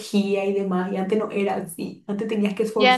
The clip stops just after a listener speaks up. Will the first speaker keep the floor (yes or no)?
no